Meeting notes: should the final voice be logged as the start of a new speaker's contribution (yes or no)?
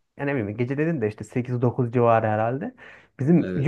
no